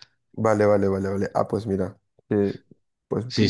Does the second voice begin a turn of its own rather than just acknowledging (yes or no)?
yes